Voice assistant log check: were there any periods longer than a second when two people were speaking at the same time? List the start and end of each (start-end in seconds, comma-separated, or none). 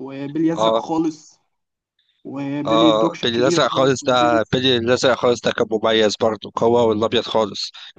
2.6-4.6